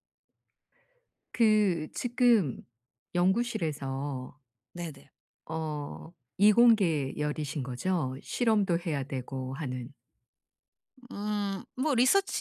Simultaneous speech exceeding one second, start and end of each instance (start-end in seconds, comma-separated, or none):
none